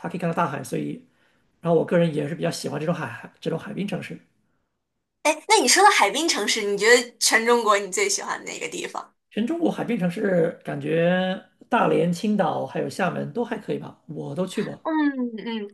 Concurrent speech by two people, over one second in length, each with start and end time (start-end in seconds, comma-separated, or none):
none